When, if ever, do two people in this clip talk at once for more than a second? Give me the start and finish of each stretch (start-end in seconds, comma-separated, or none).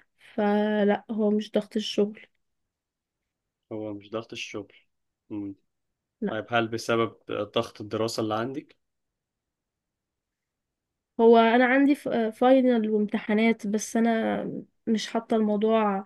none